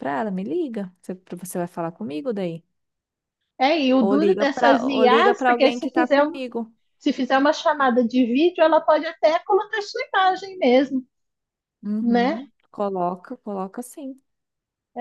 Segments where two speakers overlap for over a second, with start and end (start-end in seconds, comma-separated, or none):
4.0-6.4